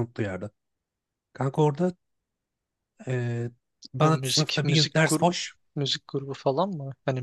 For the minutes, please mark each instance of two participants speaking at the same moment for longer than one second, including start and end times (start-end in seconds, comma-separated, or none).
4.0-5.3